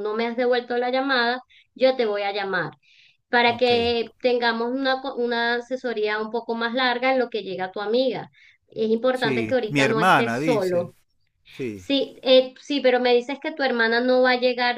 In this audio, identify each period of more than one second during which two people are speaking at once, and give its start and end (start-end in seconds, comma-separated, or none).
9.1-10.9